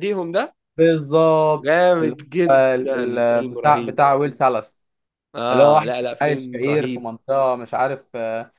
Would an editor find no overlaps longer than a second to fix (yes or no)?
no